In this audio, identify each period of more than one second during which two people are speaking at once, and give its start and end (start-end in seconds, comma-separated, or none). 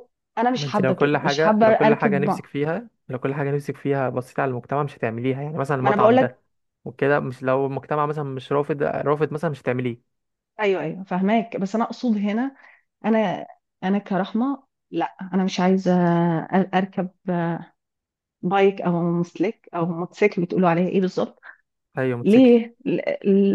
0.6-2.4